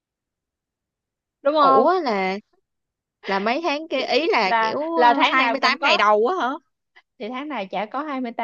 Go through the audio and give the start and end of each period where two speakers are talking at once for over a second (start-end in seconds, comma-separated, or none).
4.4-6.0